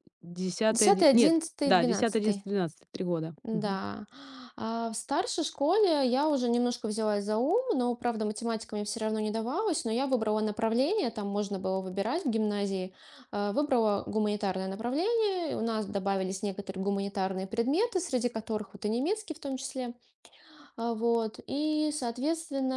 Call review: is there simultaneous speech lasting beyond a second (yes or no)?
yes